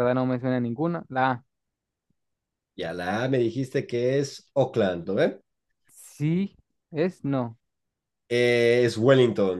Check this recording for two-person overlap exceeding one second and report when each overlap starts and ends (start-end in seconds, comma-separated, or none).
none